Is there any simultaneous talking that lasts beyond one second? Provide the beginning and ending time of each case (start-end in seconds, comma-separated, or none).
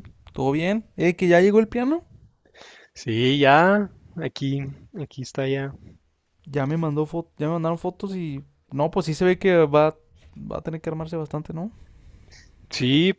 none